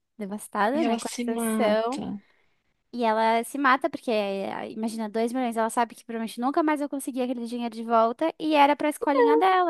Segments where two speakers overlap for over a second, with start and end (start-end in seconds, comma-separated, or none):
0.7-2.0